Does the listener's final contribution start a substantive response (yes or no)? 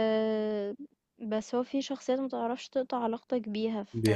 no